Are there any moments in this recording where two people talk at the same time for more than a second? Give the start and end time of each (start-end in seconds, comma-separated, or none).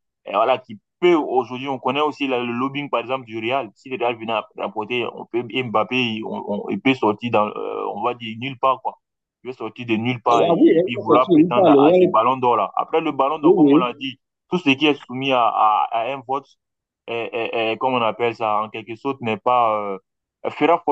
10.3-12.2